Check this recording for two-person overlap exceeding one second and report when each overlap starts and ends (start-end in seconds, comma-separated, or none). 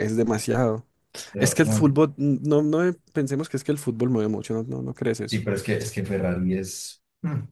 none